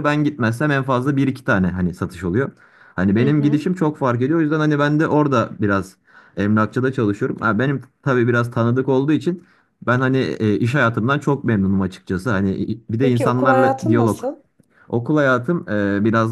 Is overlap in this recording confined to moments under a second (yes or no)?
no